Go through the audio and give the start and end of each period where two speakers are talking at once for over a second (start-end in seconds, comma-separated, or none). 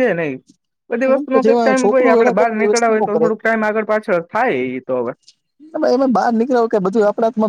1.4-3.3